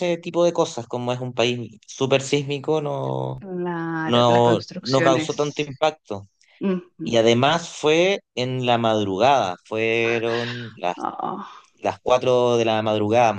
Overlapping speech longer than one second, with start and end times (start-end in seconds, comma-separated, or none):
4.0-5.7